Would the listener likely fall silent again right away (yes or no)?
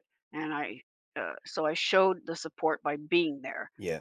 yes